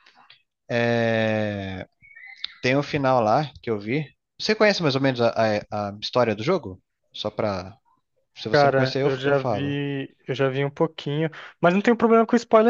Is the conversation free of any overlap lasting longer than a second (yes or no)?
no